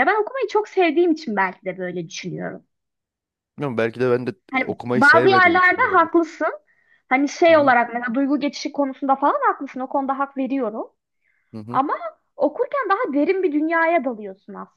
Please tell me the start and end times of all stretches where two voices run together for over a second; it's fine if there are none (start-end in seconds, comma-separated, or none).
4.5-6.1